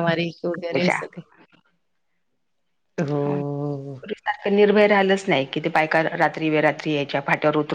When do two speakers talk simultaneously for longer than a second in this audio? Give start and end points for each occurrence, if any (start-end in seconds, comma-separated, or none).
none